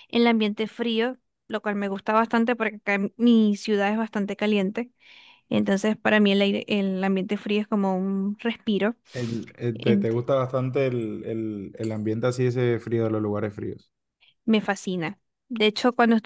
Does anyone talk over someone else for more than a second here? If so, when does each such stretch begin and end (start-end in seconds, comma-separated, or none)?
none